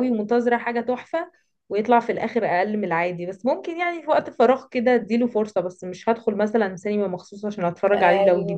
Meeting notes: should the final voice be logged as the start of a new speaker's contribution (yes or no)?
yes